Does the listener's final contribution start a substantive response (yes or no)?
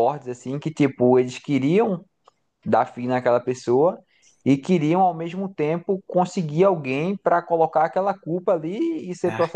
no